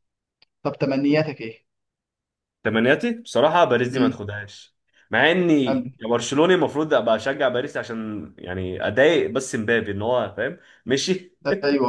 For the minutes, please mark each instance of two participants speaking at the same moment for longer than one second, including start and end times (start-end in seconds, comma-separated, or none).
none